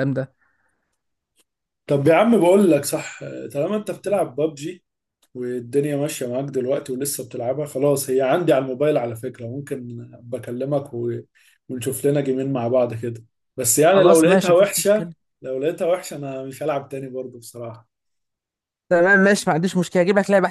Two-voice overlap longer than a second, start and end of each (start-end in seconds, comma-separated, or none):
13.9-15.1